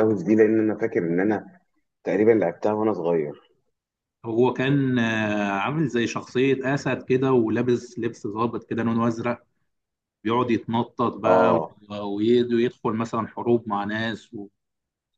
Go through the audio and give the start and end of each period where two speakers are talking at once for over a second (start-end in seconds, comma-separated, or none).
none